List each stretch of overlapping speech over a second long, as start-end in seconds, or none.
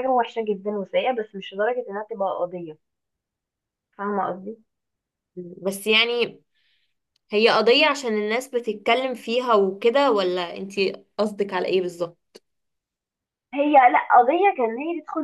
none